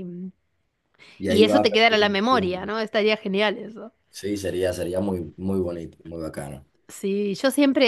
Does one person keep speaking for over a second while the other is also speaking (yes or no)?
yes